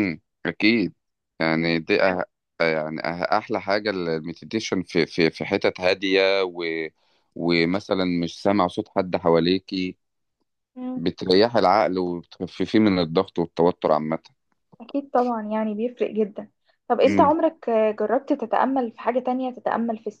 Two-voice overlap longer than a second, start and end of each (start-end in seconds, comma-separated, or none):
none